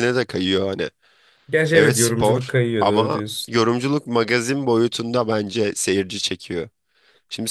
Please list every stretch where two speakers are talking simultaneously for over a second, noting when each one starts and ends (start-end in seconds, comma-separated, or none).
1.7-3.5